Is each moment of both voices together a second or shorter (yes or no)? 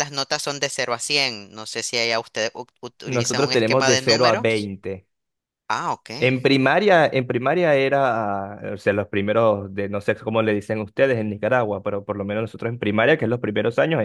no